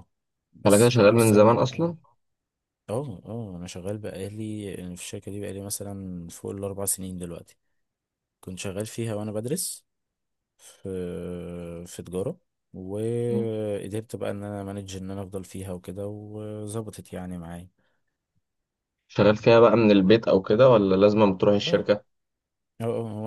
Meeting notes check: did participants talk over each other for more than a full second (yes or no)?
yes